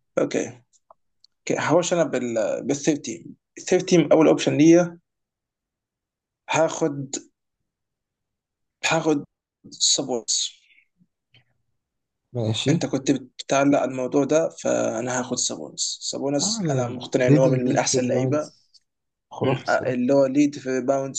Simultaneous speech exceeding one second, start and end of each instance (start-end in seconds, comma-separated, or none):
16.4-18.5